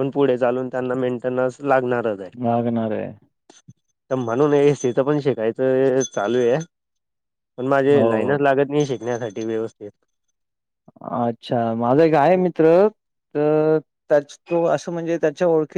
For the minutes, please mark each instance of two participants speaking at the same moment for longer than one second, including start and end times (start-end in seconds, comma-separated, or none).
none